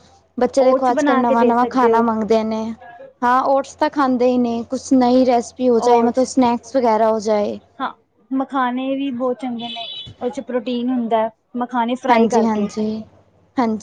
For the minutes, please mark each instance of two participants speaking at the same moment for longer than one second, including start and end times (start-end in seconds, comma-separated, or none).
0.7-2.1